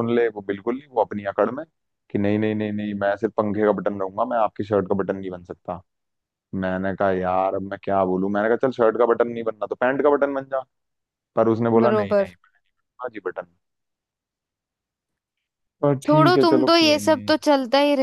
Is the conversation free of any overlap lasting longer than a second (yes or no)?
no